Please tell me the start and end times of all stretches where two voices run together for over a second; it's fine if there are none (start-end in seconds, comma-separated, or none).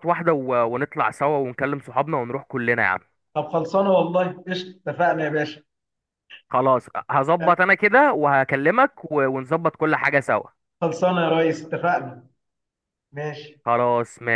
none